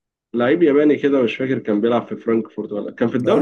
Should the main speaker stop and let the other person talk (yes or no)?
no